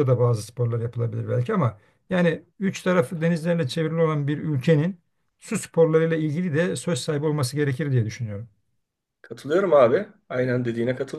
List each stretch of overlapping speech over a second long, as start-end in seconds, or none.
none